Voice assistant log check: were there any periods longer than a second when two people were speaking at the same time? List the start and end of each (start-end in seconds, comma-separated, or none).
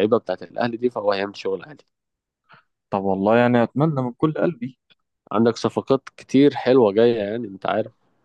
none